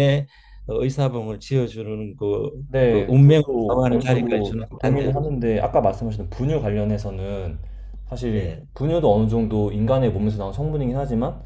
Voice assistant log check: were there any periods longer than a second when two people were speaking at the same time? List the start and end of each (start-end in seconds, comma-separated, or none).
2.9-5.2